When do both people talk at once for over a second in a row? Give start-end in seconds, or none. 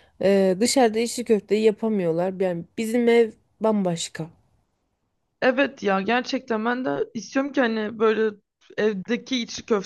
none